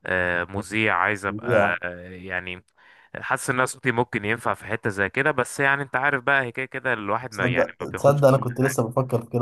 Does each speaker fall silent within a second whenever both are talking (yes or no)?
no